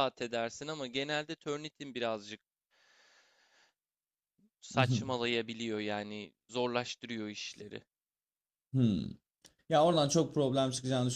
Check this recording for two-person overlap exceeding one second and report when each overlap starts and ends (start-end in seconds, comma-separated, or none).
none